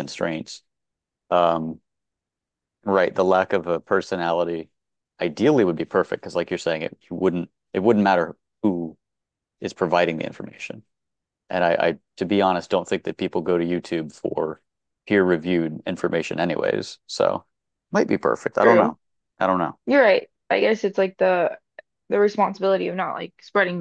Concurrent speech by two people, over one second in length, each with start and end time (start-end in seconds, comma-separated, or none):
none